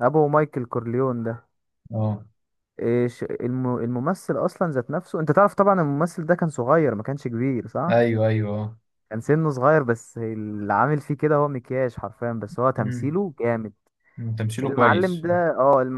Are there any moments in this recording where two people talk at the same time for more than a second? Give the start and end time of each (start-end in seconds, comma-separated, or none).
none